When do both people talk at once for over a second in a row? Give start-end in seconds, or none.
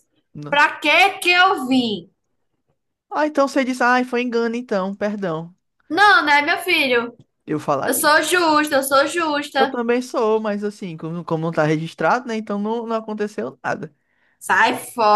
none